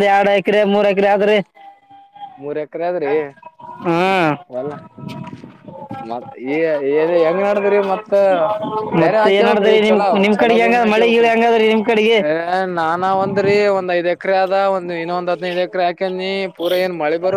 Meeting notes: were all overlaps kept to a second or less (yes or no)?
no